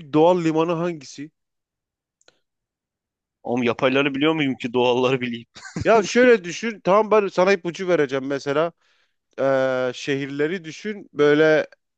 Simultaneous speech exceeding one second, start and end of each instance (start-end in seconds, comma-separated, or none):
none